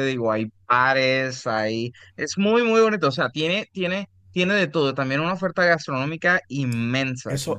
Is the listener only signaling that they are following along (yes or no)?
no